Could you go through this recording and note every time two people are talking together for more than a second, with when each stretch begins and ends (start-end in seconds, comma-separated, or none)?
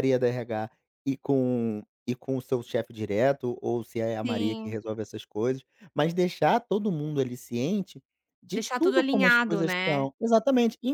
8.5-10.1